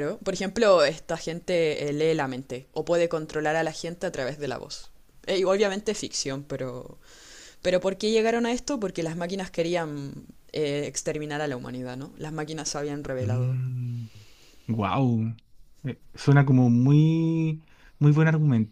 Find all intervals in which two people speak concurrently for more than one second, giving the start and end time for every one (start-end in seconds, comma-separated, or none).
none